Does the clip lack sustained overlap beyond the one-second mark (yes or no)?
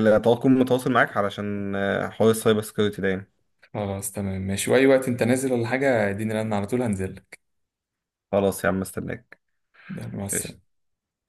yes